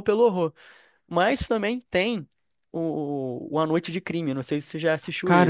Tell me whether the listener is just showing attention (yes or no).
no